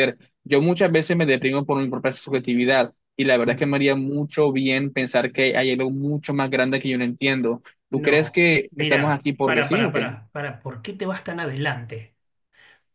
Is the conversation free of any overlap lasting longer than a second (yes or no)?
no